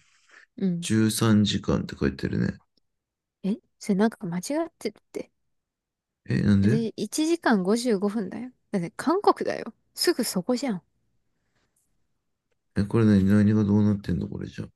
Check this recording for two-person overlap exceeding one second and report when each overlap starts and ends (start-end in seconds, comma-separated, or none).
none